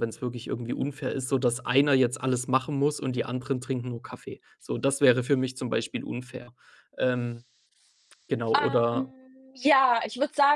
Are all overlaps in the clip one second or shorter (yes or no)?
yes